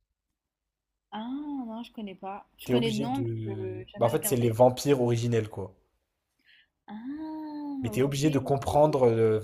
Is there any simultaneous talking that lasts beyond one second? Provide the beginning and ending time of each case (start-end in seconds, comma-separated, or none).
2.6-4.5